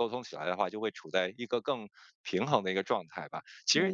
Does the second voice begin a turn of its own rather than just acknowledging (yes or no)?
no